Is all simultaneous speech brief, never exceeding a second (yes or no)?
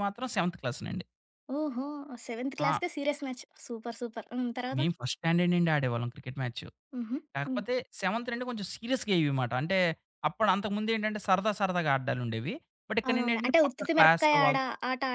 no